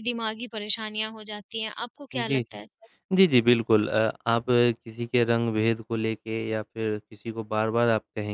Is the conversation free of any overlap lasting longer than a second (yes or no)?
yes